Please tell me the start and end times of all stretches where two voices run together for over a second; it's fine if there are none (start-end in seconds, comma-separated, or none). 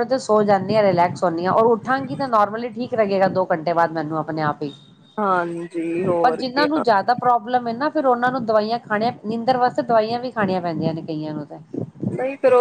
none